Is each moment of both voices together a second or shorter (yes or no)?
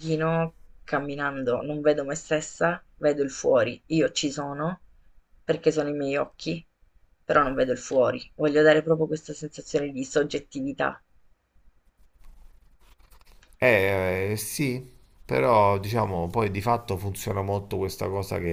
yes